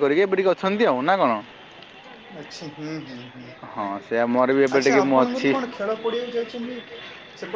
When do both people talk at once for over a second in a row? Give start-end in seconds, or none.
3.7-5.5